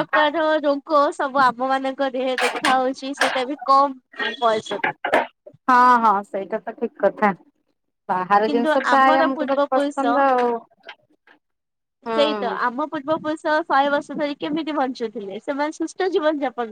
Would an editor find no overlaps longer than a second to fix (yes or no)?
no